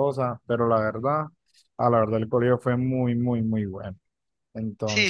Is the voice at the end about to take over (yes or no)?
yes